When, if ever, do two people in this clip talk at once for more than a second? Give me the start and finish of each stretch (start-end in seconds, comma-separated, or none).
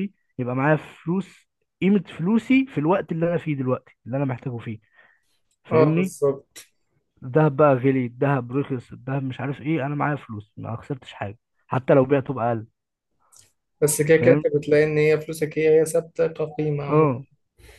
none